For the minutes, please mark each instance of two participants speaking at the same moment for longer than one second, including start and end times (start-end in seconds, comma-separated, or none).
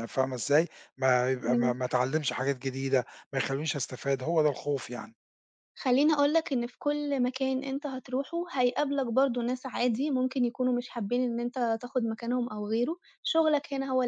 none